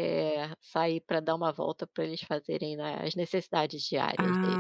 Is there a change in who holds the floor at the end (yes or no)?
yes